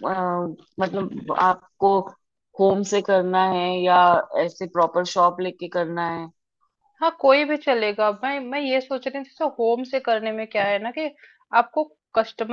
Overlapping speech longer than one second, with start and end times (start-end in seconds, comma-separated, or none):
none